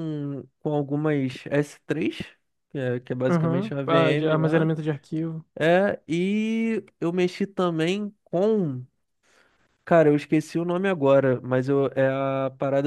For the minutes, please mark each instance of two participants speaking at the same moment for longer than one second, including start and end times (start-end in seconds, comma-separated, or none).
3.3-4.7